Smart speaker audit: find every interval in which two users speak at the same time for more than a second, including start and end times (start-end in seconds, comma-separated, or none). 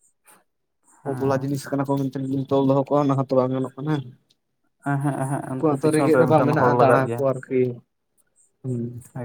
5.5-7.2